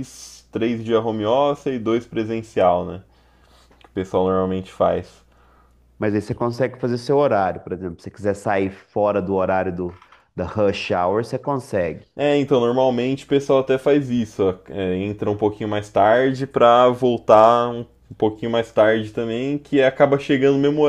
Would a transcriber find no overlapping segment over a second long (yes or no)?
yes